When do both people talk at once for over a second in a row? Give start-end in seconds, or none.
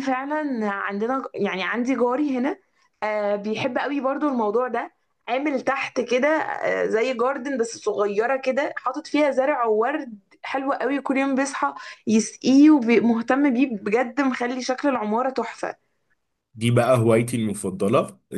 none